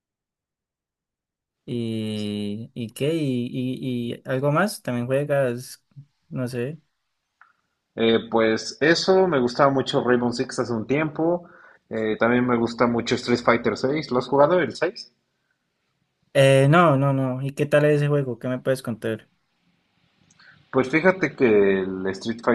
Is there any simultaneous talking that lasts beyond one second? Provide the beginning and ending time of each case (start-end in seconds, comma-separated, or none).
none